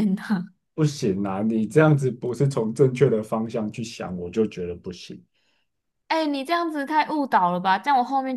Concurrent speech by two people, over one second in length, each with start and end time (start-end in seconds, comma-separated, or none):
none